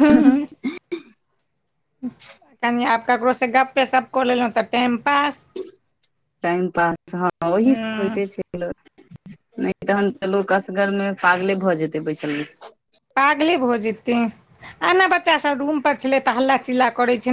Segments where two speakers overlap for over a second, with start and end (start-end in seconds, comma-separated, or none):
none